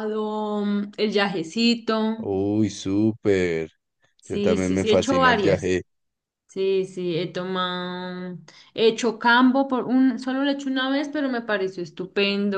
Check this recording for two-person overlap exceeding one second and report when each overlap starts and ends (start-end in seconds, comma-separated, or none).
4.2-5.7